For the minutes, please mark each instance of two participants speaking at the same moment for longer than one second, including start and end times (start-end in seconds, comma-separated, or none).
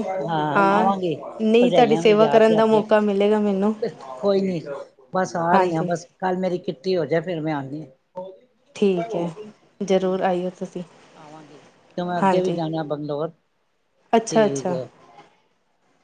1.6-2.8